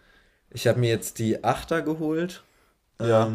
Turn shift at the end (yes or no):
no